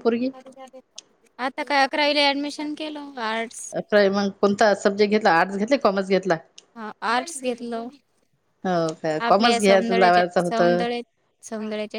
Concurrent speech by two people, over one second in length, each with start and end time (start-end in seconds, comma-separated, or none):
9.3-10.8